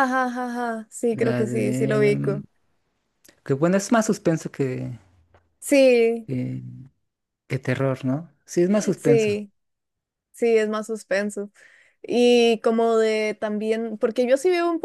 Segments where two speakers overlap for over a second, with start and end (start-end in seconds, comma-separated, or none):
1.1-2.4